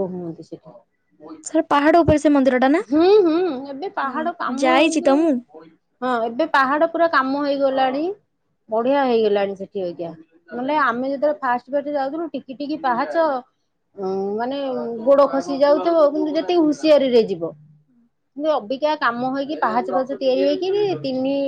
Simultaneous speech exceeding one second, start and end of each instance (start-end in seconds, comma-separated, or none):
none